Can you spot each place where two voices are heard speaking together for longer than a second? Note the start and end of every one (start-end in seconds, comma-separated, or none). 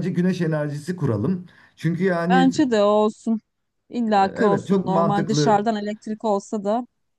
4.2-5.6